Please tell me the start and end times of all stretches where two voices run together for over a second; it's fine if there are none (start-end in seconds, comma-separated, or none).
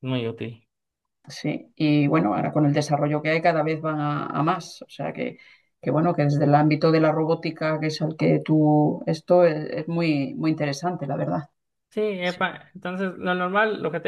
none